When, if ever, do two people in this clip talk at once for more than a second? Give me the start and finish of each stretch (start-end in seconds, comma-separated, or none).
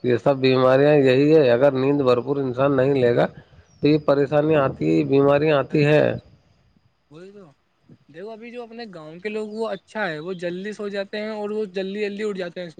none